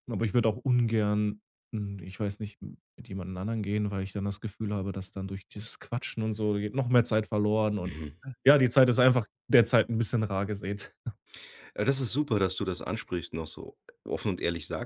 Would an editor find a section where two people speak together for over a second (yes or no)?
no